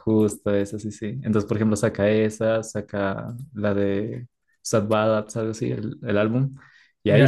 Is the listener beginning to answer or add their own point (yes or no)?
yes